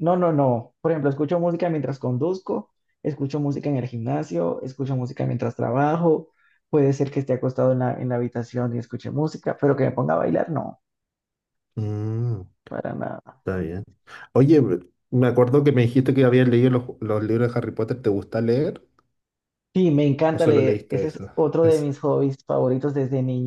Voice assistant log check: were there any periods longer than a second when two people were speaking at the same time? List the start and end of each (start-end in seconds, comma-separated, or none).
20.3-21.9